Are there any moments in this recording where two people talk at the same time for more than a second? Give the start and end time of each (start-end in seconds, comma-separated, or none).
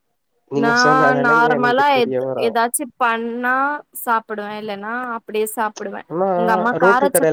0.6-2.5